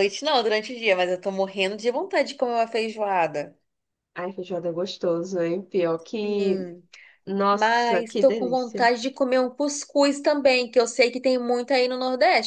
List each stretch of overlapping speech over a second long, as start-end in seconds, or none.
7.5-8.9